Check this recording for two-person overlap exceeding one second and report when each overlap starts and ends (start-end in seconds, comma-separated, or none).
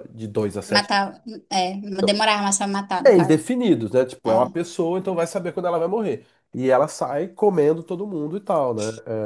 none